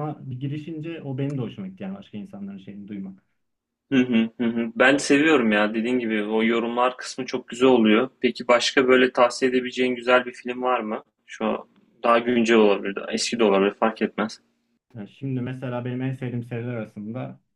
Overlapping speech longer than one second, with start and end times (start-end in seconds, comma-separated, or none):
none